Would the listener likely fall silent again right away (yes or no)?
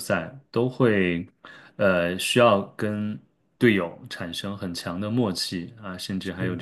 yes